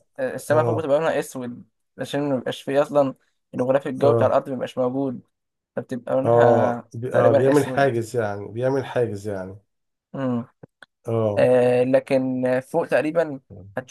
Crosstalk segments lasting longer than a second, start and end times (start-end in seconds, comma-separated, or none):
6.2-8.0